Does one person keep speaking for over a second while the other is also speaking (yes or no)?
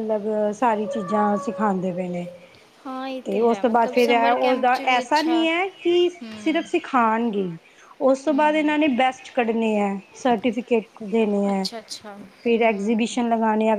yes